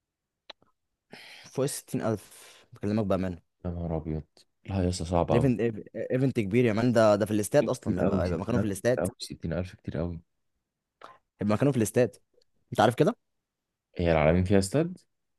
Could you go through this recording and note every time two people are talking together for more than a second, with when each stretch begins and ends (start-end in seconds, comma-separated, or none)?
7.6-9.0